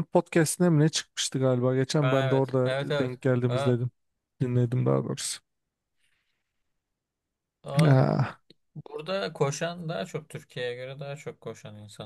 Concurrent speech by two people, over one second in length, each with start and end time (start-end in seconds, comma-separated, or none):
2.0-3.8